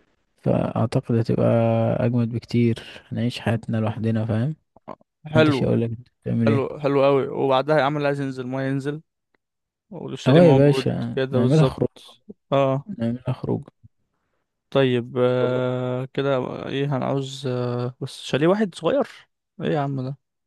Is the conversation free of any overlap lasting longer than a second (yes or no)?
no